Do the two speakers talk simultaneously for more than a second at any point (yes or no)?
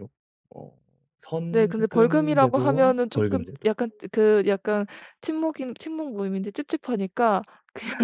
yes